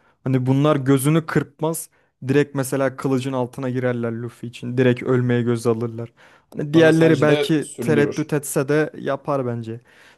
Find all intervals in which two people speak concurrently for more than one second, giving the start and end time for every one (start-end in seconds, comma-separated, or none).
6.7-8.3